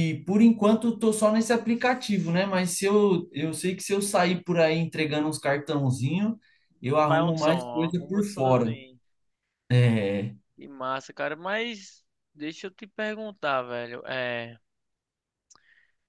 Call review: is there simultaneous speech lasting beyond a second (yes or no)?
yes